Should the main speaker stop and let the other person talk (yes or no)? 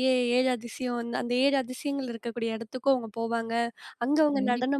no